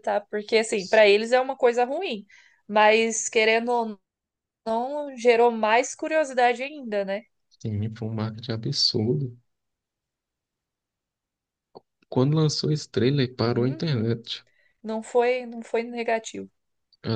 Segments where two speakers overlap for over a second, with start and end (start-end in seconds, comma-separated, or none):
none